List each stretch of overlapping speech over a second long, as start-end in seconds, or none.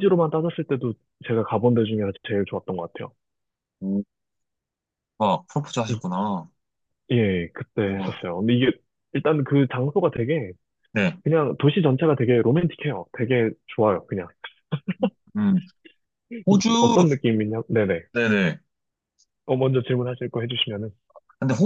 none